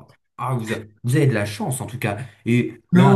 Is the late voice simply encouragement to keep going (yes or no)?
no